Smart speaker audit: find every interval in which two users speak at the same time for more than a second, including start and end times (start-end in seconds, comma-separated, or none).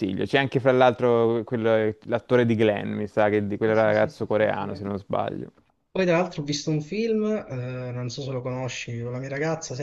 3.6-4.8